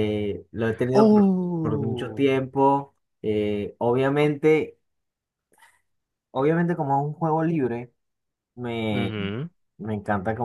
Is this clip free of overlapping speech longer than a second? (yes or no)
no